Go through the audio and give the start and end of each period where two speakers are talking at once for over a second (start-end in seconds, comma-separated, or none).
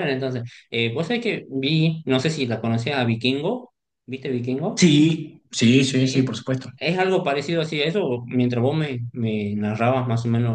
none